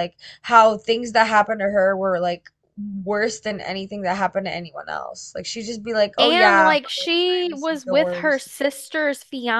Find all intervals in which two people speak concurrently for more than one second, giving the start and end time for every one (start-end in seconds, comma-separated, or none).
6.2-8.4